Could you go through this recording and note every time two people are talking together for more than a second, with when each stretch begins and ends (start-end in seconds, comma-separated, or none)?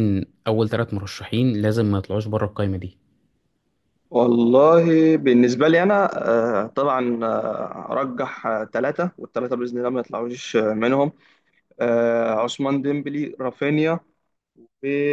none